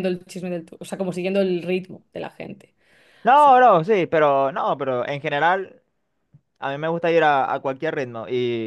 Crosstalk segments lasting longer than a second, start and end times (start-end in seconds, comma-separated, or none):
none